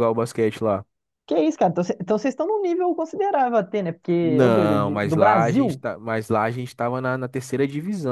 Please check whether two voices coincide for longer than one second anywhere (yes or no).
yes